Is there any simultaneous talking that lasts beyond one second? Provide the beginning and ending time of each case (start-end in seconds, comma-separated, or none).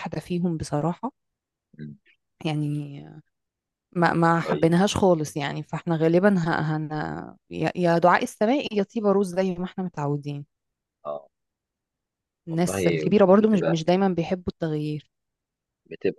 12.5-13.8